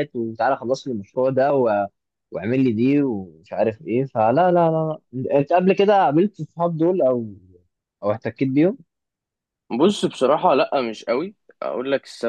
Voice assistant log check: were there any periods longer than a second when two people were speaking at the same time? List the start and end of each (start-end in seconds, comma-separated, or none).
none